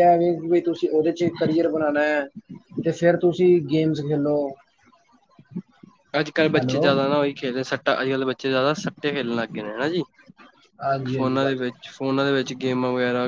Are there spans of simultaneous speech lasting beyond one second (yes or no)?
no